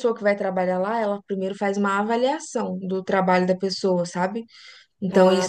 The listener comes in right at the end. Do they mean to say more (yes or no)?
no